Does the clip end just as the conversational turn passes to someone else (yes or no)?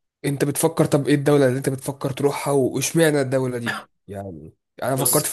no